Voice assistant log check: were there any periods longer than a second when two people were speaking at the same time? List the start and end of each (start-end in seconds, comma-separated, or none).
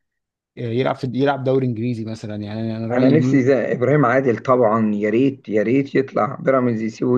none